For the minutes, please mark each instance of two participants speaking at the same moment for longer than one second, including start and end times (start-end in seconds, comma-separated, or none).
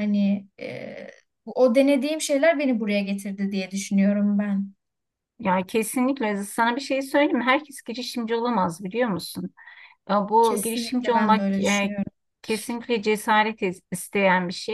10.4-11.9